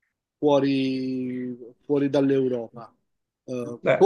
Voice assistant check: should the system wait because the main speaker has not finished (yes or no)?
yes